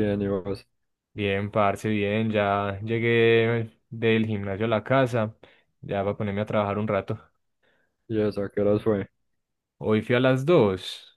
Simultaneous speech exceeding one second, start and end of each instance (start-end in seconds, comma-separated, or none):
none